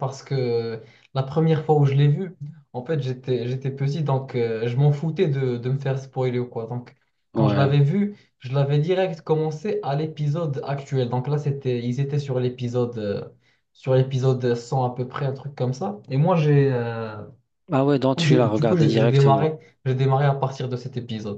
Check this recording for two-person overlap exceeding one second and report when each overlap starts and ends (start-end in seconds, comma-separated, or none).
18.1-19.5